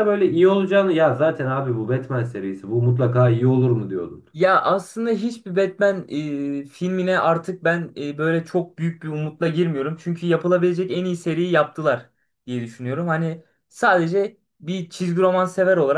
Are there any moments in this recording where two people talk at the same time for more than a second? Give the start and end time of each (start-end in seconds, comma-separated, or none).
none